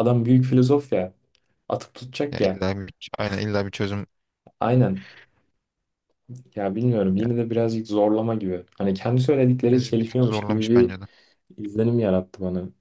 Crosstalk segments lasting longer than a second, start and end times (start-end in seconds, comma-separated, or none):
9.7-10.9